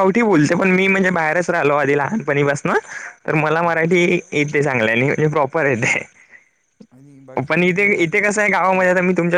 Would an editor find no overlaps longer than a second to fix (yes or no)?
yes